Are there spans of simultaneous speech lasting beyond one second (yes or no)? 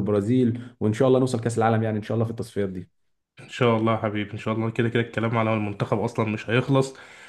no